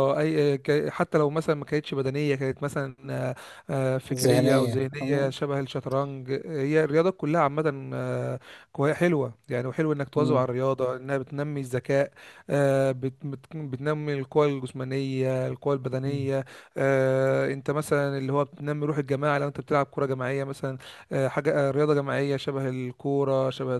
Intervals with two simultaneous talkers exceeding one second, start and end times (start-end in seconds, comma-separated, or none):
4.1-5.3